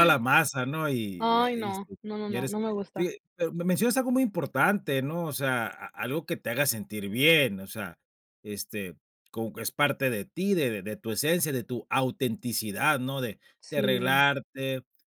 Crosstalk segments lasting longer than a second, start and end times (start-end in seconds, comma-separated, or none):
1.2-3.1